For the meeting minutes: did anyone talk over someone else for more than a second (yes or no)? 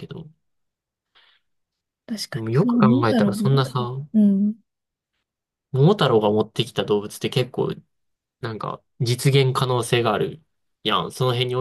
yes